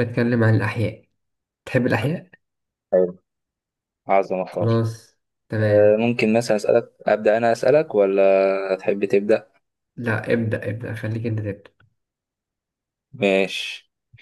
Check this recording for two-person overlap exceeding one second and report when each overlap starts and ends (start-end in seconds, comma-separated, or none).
none